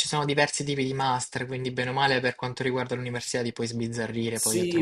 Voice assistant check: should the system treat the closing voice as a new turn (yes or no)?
yes